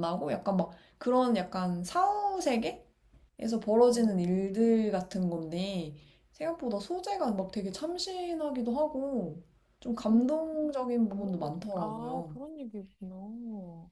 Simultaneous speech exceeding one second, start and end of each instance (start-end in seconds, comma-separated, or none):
11.1-12.4